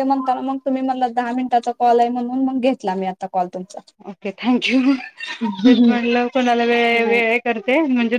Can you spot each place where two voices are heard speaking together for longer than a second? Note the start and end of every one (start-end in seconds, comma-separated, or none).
none